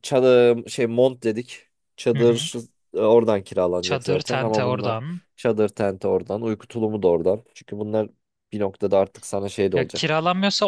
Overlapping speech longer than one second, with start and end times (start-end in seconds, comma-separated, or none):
3.8-5.0